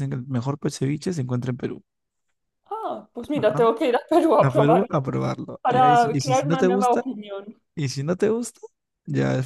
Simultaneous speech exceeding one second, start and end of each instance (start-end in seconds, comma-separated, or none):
5.6-7.0